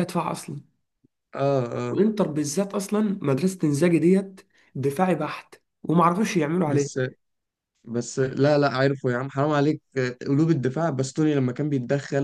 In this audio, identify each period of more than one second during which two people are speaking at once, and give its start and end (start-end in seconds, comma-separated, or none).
none